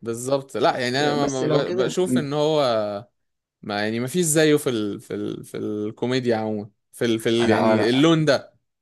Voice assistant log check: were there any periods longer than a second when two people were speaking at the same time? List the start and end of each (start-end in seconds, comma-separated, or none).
1.0-2.3